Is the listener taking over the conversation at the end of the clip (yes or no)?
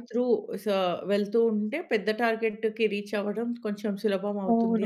yes